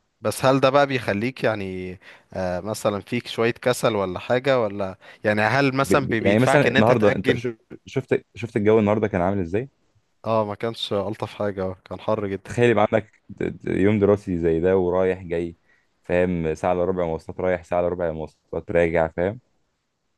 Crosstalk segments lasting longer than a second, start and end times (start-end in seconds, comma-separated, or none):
5.8-7.4